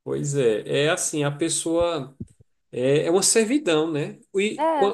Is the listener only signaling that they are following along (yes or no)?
yes